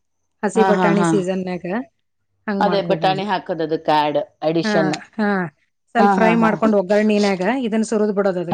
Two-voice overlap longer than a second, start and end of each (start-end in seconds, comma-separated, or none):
none